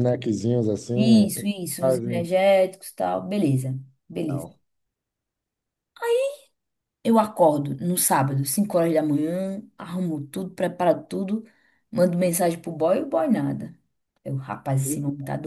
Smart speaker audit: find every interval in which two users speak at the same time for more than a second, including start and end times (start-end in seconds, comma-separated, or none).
0.9-2.3